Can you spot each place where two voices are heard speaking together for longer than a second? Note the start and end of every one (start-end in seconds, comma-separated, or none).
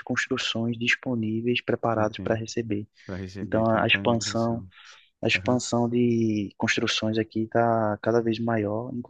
3.4-4.6